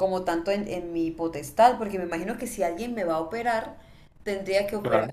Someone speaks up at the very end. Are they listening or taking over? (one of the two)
listening